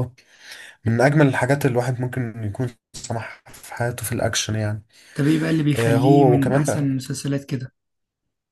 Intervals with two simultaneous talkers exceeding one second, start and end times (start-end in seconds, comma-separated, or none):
5.8-7.0